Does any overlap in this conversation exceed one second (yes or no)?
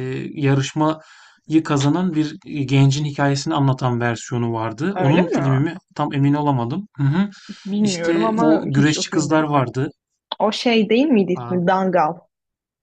yes